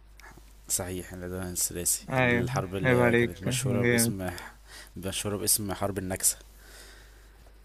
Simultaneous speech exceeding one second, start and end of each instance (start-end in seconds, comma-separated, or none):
2.1-4.1